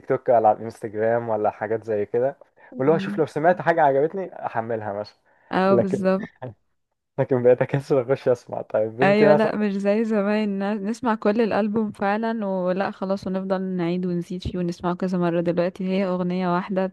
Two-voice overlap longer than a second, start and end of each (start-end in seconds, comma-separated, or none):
none